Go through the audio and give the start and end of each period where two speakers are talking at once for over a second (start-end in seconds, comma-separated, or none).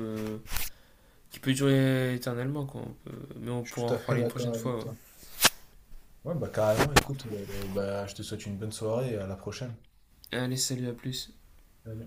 3.6-4.9